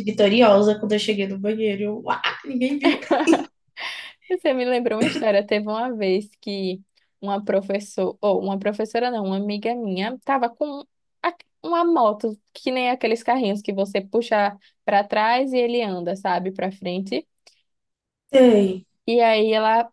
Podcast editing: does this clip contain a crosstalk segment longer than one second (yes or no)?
no